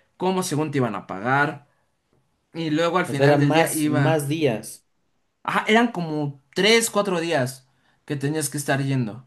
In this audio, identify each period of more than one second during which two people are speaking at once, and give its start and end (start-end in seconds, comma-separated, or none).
3.1-4.3